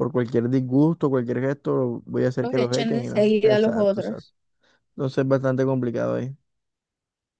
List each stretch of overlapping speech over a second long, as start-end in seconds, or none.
2.4-4.3